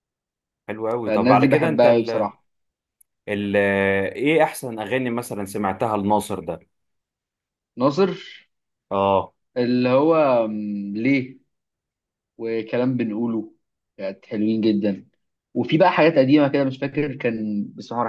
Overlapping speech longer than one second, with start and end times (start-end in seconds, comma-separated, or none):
1.1-2.3